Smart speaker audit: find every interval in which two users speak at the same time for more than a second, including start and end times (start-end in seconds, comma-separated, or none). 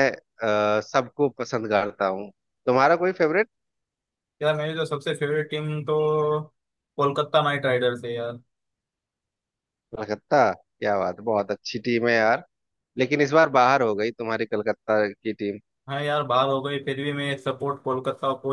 none